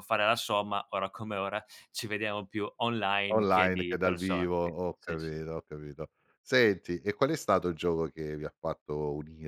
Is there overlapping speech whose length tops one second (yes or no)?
yes